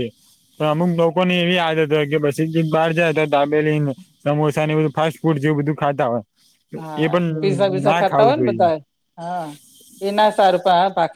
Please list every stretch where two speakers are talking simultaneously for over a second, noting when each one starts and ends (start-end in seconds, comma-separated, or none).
7.0-8.7